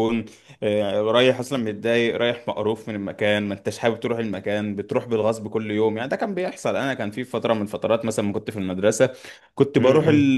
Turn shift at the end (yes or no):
no